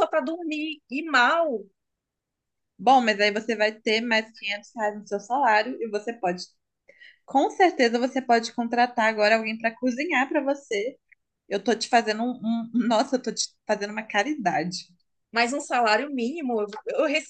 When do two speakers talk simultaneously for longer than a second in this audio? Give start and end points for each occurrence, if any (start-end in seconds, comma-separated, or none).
none